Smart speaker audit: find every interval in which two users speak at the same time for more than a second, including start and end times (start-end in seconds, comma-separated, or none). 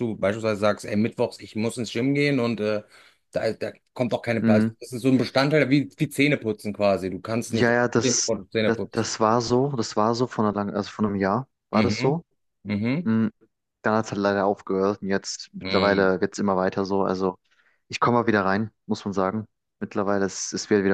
7.5-9.1